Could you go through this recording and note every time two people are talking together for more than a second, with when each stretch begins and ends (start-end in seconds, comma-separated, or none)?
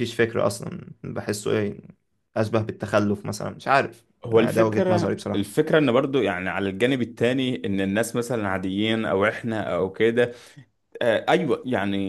4.2-5.6